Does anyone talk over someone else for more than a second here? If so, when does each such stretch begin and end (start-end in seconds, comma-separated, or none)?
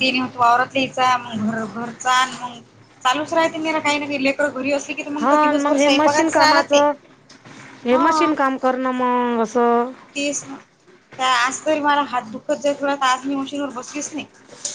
5.2-6.8